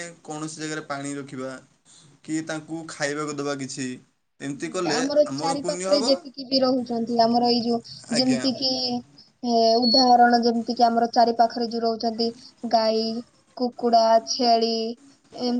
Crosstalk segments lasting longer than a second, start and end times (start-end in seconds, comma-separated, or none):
none